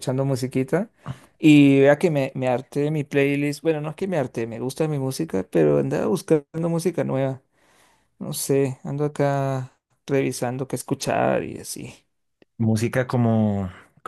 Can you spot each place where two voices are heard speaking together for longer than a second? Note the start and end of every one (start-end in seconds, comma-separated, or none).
none